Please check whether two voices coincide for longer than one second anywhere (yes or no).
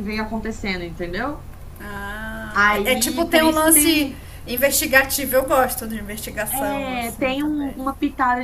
yes